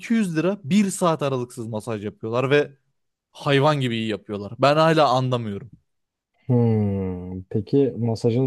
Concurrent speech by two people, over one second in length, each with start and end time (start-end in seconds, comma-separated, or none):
none